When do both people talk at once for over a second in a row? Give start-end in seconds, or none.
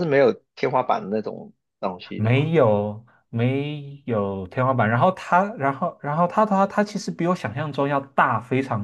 none